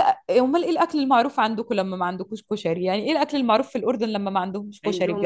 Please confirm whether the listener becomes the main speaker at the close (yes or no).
yes